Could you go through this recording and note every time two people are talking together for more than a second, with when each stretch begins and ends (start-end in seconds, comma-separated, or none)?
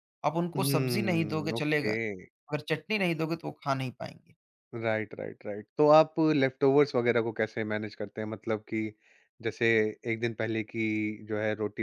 0.6-1.9